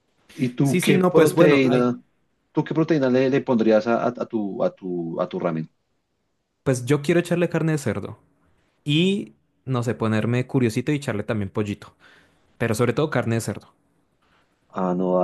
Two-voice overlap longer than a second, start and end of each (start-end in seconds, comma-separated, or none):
0.6-1.9